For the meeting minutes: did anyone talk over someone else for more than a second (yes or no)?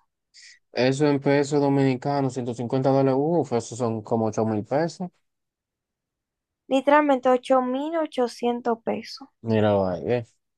no